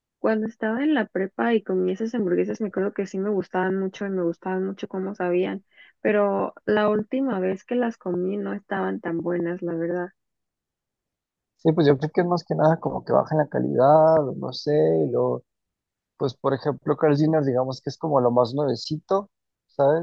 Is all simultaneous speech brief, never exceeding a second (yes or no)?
yes